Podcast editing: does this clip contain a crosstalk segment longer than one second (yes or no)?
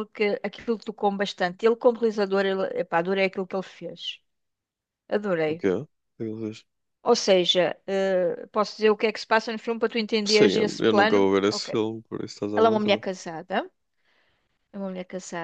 yes